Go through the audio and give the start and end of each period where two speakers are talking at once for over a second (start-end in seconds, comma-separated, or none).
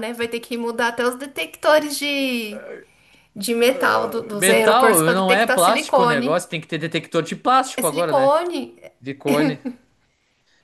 4.4-6.4